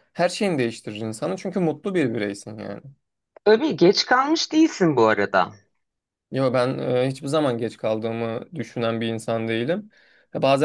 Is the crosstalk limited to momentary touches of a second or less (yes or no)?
yes